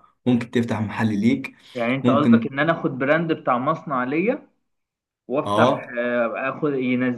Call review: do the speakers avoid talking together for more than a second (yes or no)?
yes